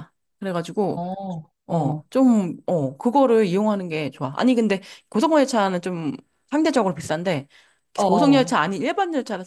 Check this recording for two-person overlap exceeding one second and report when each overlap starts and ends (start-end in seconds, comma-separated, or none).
none